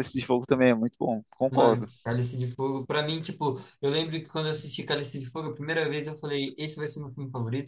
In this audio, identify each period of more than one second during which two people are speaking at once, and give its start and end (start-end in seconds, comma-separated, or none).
none